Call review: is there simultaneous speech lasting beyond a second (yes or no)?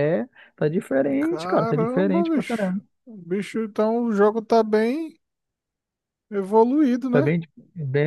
yes